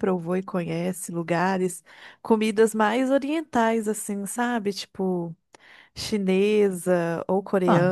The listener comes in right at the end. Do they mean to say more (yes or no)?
yes